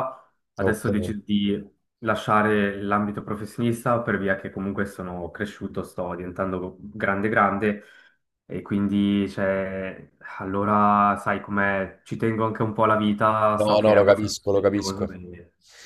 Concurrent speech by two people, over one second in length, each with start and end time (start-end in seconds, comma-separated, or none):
13.6-15.2